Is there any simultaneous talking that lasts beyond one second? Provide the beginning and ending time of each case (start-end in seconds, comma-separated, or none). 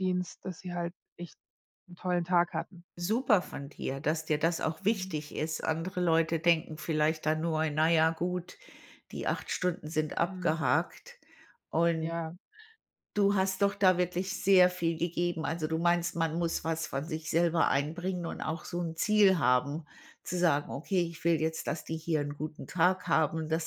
none